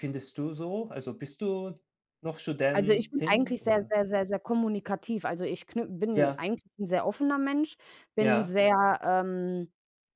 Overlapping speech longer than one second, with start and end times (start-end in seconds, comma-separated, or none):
2.7-4.0